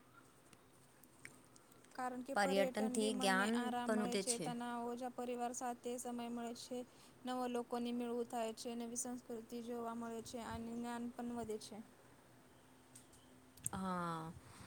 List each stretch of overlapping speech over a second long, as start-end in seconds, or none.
2.4-4.2